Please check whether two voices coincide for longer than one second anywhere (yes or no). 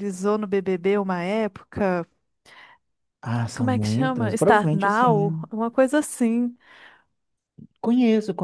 yes